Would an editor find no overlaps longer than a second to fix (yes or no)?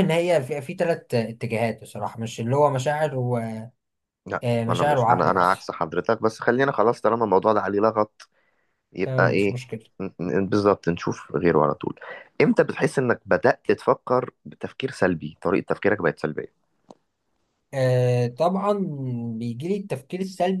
no